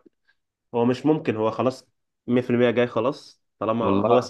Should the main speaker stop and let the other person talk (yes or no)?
no